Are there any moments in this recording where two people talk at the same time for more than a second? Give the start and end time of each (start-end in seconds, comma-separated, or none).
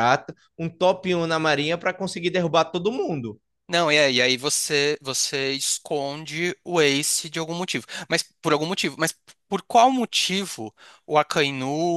none